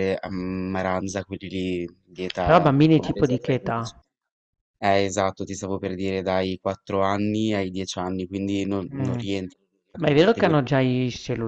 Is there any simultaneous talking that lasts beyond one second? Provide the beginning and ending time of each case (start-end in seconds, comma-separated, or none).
2.4-4.0